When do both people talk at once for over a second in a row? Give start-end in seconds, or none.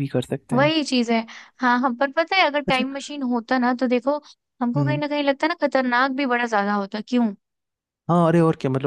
none